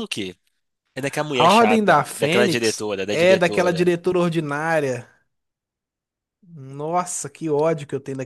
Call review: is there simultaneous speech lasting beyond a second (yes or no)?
yes